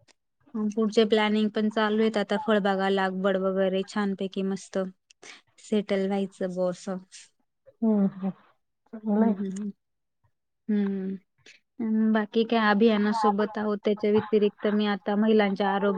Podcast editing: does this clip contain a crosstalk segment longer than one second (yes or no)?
no